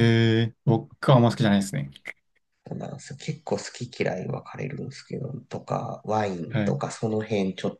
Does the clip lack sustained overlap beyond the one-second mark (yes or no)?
yes